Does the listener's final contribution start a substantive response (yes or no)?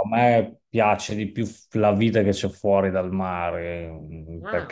no